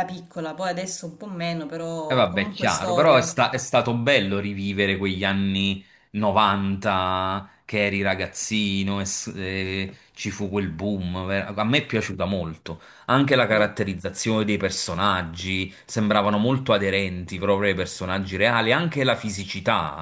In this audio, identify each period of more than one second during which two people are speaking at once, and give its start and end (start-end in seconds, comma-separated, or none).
2.1-3.4